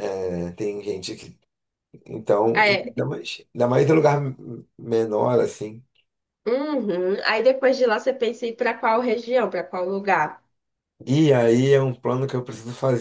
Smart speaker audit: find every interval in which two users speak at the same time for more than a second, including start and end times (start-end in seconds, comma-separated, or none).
none